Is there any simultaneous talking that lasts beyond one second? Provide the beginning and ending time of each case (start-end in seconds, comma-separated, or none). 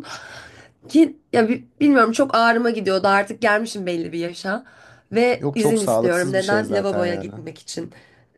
5.4-7.3